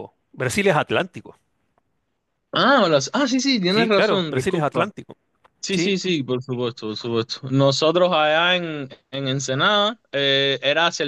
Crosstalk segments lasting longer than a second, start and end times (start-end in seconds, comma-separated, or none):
3.7-4.9